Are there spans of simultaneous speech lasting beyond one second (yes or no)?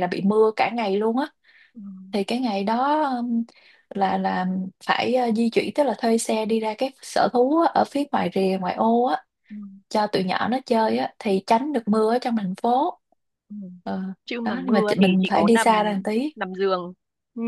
yes